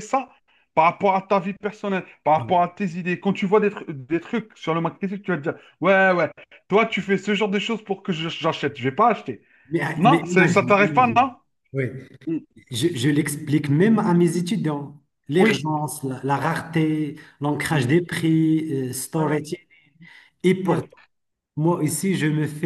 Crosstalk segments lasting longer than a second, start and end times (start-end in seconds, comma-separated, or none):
10.0-11.2